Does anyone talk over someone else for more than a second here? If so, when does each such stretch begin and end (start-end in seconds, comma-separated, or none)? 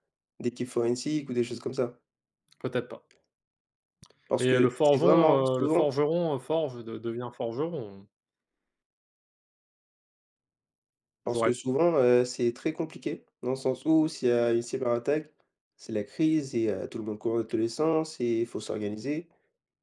4.4-5.9